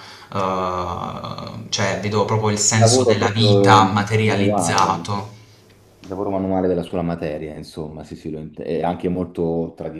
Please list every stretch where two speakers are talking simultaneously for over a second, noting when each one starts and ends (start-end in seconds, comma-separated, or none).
2.8-5.1